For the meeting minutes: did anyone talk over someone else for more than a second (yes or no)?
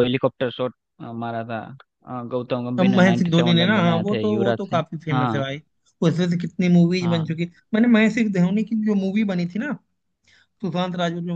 yes